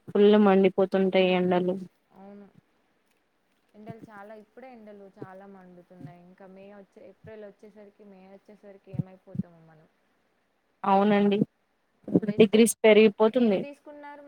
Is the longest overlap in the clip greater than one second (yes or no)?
no